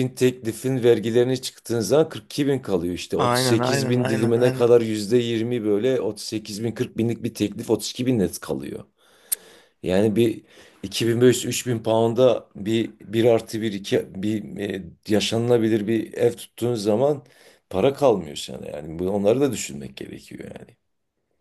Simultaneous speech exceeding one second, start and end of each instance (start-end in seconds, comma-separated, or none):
3.1-4.8